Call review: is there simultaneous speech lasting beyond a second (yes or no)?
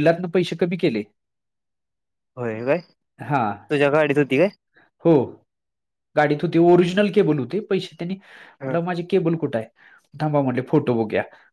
no